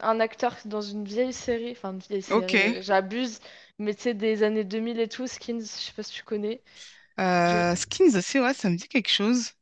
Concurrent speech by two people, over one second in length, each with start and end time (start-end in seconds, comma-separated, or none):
none